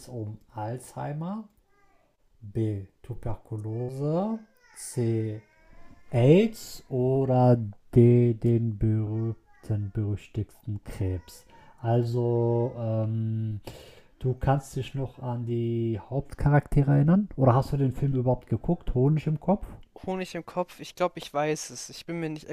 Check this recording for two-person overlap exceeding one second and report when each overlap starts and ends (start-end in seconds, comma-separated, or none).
none